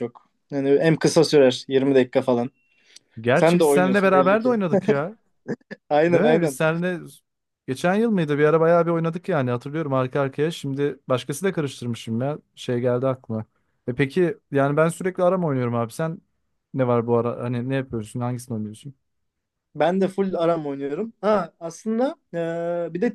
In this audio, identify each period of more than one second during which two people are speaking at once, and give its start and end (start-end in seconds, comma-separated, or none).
3.3-4.6